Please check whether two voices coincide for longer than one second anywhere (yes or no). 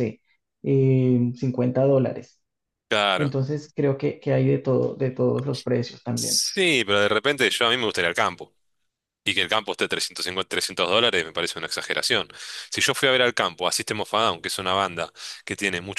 no